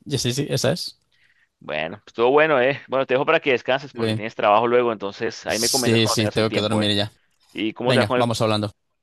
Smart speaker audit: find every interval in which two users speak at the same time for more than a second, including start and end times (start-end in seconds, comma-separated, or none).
5.5-6.9